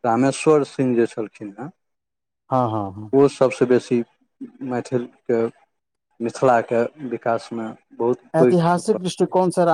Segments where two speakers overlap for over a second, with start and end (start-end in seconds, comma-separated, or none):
none